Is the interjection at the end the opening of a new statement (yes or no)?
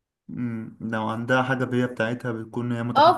yes